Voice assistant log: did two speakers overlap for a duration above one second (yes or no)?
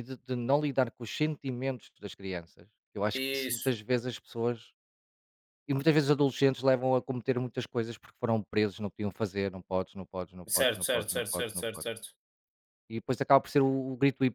yes